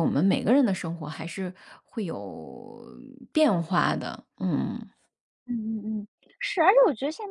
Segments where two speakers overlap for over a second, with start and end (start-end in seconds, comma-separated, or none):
none